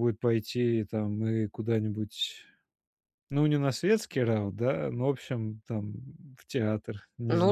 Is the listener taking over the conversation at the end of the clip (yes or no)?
yes